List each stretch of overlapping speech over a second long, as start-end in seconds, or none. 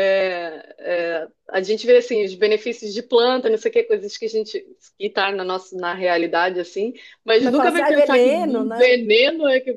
7.4-9.0